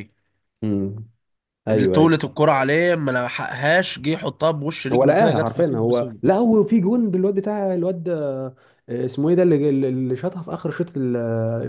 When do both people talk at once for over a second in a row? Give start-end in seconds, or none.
4.9-6.2